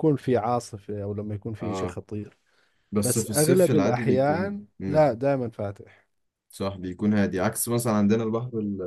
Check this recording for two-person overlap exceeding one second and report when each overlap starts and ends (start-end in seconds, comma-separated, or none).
3.0-5.1